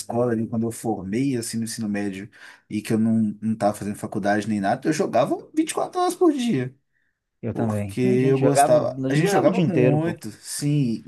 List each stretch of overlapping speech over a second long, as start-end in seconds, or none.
7.5-10.2